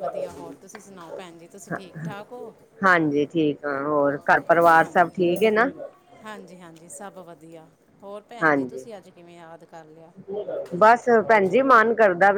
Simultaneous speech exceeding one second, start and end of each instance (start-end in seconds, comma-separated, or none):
none